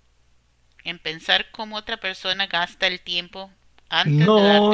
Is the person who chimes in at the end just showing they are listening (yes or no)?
no